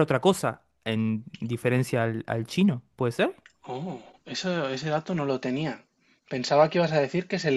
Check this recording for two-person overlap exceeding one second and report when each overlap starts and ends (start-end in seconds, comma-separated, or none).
none